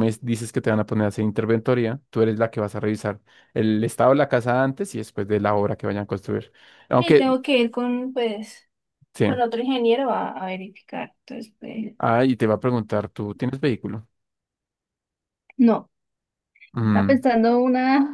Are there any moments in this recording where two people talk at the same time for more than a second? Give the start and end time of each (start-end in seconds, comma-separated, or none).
none